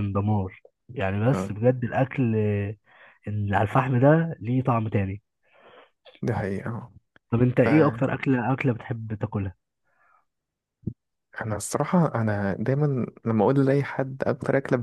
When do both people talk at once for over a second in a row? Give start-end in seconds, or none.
none